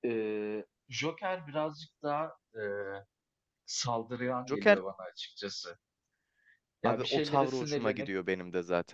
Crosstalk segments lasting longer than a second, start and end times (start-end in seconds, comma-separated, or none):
6.8-8.1